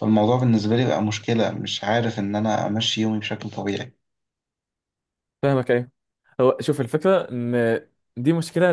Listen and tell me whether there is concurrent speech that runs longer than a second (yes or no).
no